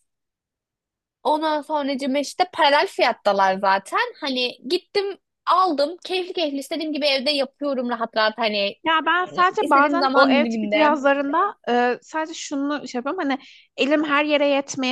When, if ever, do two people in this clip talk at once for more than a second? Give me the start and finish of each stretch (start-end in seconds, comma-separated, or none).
9.6-11.0